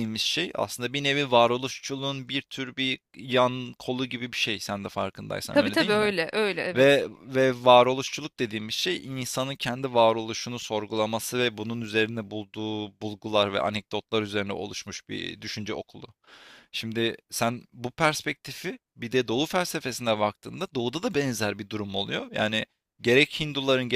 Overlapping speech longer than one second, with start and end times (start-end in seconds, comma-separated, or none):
none